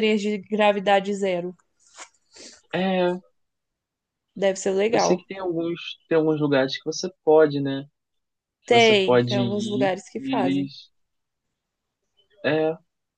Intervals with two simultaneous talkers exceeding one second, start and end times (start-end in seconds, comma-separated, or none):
8.7-10.7